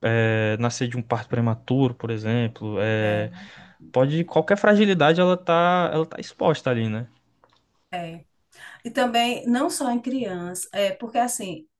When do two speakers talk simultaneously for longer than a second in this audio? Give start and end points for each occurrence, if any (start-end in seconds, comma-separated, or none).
none